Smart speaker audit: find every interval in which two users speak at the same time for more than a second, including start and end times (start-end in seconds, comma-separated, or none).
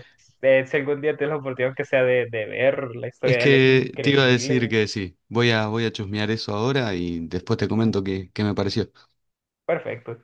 3.2-4.7